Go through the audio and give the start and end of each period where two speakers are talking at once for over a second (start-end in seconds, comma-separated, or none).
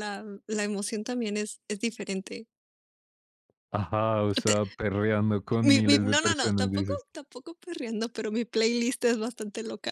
5.6-7.0